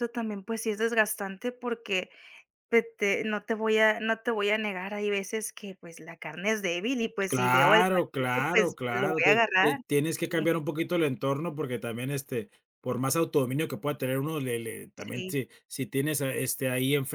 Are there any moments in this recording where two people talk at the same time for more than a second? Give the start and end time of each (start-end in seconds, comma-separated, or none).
7.3-10.5